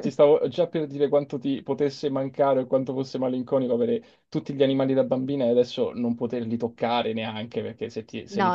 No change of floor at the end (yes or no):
no